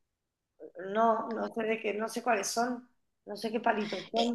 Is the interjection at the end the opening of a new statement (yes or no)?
yes